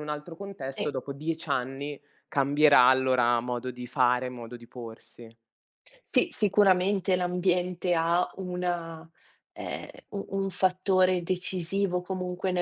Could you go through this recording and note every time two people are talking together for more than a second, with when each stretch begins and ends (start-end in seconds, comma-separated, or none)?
none